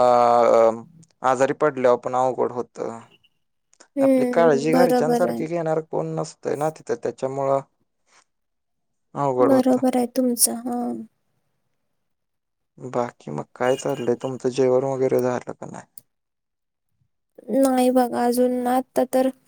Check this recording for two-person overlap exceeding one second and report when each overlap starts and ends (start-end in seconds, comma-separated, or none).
4.1-5.4